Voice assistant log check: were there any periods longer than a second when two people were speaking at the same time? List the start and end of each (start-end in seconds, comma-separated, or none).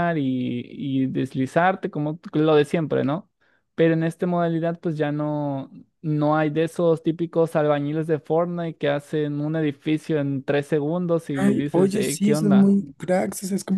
11.4-12.7